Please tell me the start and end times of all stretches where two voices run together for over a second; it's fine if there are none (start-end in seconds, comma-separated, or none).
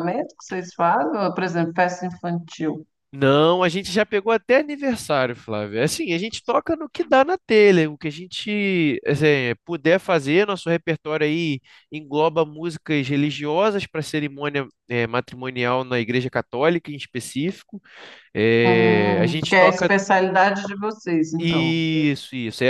18.6-19.9